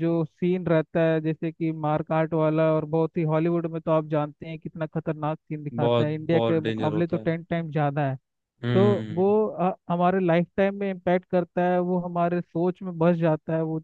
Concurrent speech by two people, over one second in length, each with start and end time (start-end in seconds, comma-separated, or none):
5.8-7.3